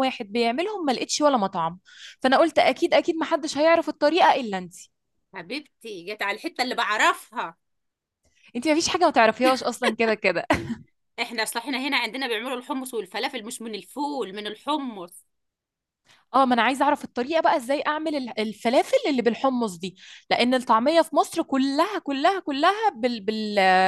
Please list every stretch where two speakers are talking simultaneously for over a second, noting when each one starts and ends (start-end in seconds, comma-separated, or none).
none